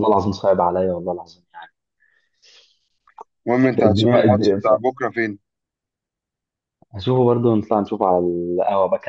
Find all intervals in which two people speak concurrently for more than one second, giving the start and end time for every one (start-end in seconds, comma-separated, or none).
none